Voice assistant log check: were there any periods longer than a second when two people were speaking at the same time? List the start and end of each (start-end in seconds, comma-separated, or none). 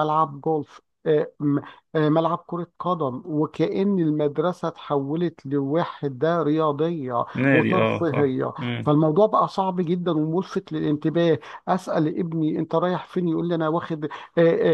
7.3-8.9